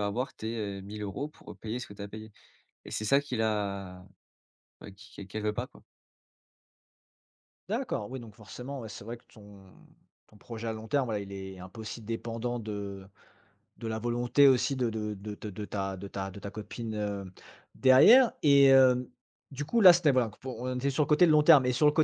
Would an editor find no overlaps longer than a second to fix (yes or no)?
yes